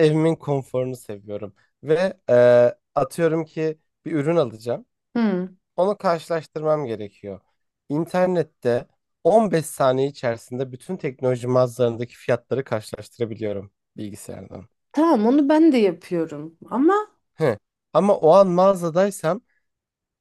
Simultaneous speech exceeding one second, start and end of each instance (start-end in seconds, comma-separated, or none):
none